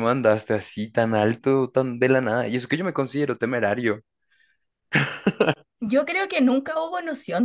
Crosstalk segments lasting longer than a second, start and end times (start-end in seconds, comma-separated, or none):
none